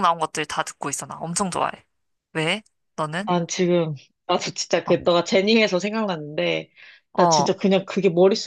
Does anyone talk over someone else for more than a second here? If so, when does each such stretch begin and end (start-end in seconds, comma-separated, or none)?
none